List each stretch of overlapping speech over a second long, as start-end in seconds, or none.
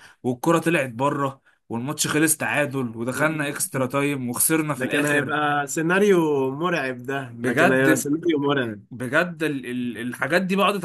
none